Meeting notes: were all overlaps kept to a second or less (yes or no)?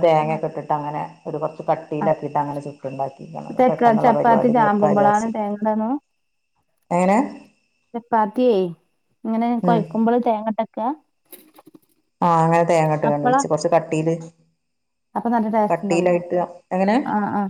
no